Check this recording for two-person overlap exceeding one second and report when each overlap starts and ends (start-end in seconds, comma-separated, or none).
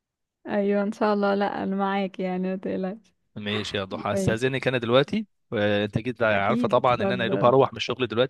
6.3-7.5